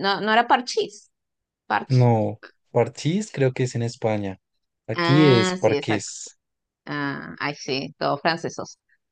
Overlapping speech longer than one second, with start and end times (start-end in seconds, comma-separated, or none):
4.9-6.1